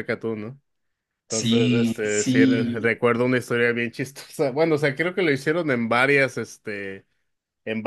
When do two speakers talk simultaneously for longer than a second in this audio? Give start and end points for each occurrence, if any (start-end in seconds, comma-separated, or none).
1.3-2.9